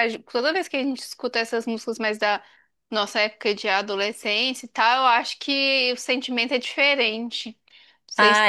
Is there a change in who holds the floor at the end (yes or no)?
yes